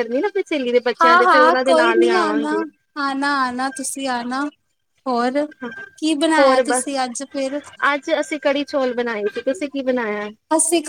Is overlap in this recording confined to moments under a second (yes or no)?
yes